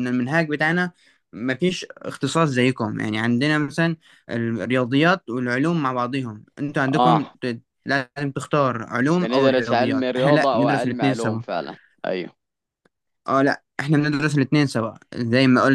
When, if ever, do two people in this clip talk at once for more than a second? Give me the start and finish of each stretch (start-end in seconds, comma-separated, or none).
9.2-11.4